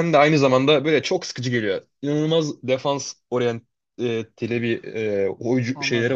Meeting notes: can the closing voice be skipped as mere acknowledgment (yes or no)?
yes